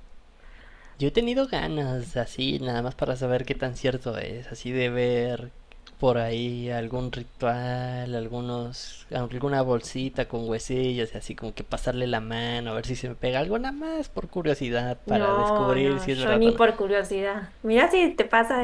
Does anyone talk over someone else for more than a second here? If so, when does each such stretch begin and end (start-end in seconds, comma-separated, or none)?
15.1-16.6